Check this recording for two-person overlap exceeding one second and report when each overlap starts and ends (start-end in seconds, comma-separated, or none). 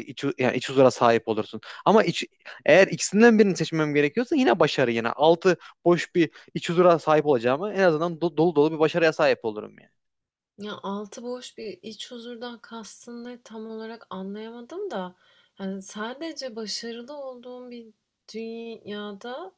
none